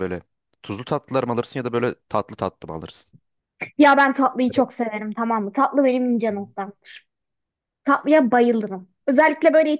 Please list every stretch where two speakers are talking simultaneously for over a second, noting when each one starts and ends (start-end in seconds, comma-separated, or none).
none